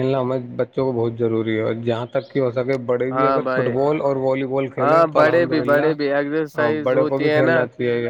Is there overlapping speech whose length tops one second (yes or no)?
yes